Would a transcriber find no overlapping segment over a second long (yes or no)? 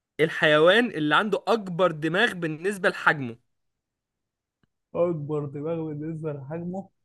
yes